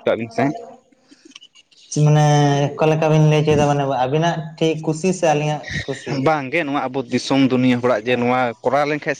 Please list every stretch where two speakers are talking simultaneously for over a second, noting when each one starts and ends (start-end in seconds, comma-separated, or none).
none